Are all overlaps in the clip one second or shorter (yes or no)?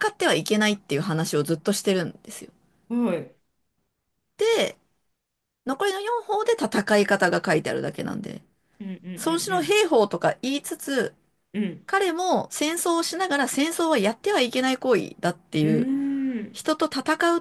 yes